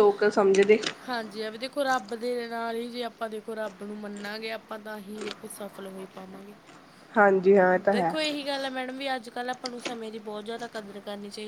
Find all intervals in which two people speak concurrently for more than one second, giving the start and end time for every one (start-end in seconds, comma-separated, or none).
none